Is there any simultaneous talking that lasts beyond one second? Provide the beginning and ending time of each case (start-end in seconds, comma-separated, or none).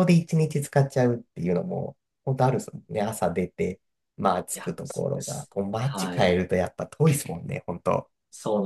4.5-6.4